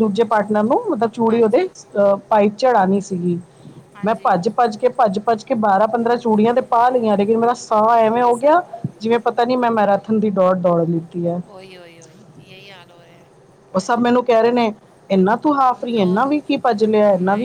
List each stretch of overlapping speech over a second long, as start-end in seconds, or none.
none